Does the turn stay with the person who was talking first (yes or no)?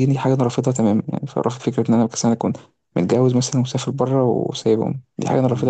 no